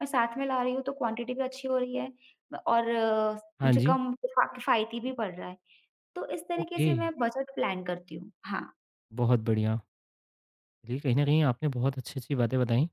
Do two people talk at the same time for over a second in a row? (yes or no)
no